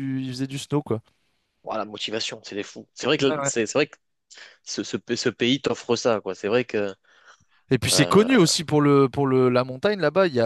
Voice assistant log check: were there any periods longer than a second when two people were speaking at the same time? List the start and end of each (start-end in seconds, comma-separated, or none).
none